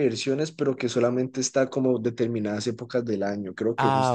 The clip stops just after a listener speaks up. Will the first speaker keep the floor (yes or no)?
yes